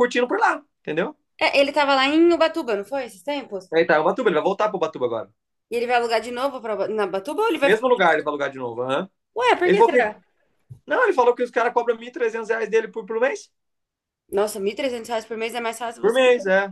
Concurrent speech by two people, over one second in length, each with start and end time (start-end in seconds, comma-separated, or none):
none